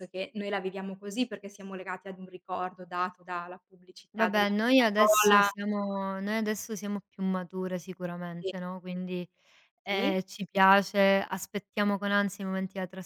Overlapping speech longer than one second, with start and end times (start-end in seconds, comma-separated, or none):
4.1-5.5